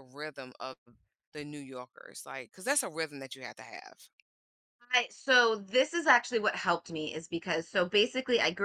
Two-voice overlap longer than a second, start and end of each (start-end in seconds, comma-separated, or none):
none